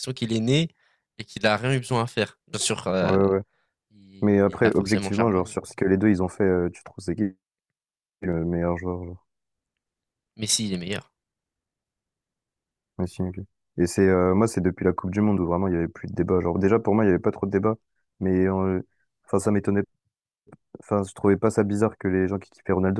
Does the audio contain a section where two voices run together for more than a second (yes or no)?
yes